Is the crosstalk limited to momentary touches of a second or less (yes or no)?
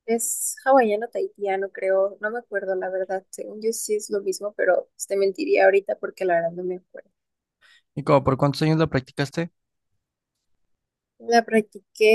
yes